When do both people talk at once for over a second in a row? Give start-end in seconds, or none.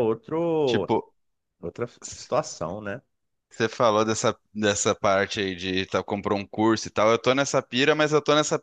none